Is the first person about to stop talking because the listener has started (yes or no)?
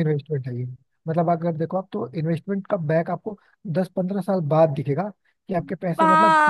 yes